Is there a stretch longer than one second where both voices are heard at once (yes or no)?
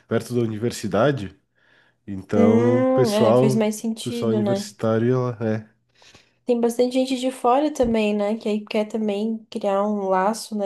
yes